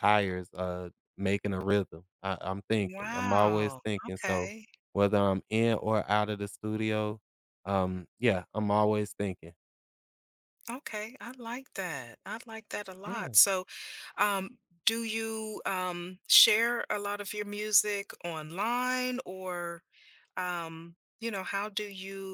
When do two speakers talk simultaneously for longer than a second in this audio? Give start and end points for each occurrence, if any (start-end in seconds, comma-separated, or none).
2.8-4.5